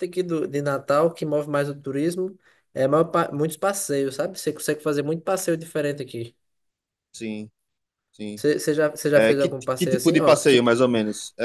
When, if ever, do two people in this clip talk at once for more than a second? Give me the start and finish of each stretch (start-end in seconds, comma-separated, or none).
9.1-10.7